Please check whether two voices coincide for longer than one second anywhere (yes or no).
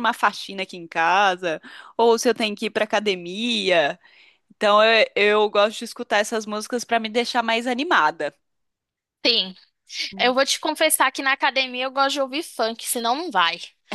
no